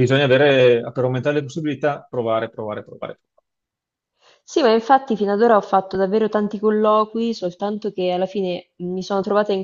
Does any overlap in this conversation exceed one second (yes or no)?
no